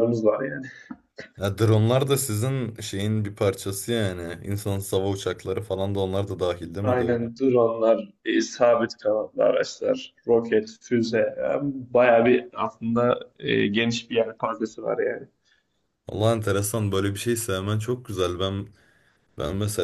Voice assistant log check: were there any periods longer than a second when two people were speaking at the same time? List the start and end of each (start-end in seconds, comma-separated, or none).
none